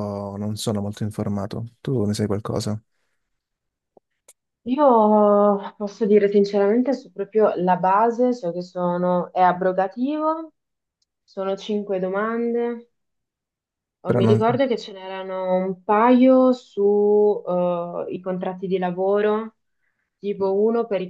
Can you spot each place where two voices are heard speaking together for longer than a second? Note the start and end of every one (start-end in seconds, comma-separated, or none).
none